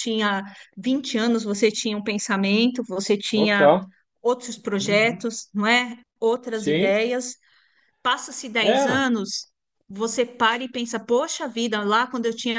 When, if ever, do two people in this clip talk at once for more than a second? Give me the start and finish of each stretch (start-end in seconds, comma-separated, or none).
none